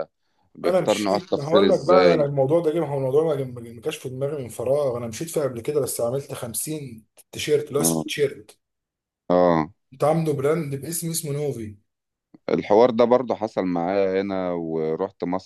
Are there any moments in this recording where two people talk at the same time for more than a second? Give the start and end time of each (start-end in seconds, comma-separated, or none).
0.7-2.3